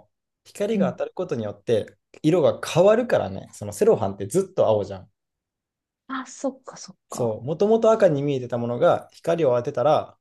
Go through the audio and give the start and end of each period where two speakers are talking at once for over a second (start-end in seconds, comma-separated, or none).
none